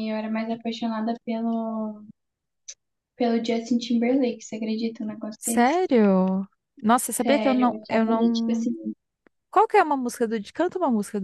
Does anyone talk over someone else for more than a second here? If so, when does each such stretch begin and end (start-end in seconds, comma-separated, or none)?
7.2-8.7